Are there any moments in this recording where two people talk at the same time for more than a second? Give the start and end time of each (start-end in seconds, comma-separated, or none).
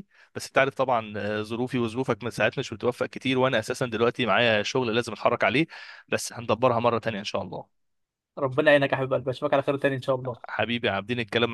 none